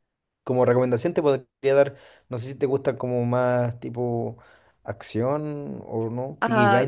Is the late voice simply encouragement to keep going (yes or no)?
no